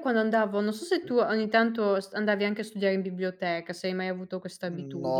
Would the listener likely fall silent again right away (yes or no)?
no